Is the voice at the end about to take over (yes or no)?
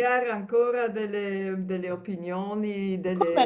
no